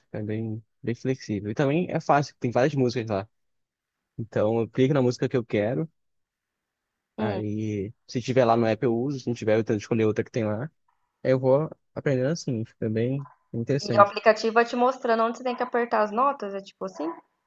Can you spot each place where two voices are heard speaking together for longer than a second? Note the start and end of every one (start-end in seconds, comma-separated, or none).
none